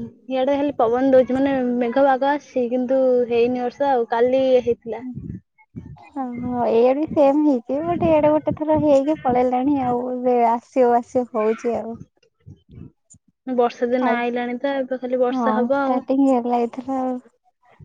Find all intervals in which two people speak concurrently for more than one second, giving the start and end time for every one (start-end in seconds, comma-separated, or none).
13.9-15.9